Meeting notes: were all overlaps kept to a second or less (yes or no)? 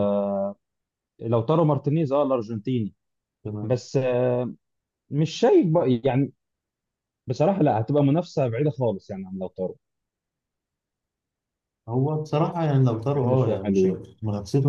no